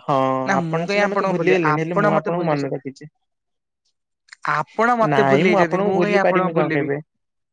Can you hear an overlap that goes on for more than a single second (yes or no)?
yes